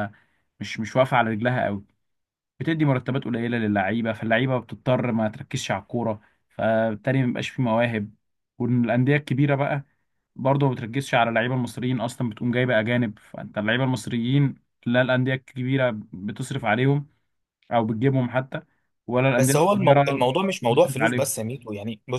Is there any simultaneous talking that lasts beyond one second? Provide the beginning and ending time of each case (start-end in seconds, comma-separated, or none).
19.4-21.3